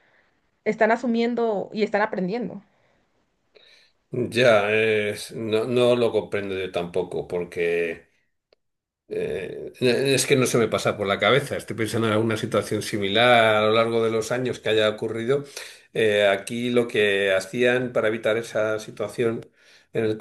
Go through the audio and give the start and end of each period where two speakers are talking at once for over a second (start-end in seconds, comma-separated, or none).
none